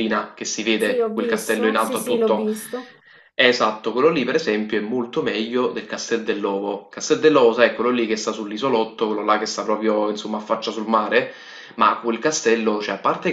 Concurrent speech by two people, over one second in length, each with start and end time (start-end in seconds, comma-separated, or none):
0.8-2.5